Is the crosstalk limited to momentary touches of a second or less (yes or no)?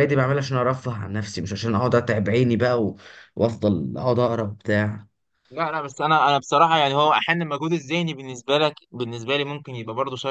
yes